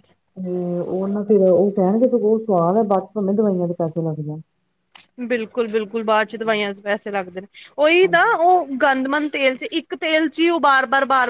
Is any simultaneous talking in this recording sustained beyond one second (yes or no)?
no